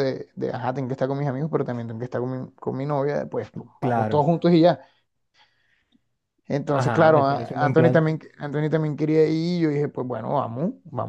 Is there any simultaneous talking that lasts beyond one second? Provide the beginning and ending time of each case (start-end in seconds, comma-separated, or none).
6.7-8.1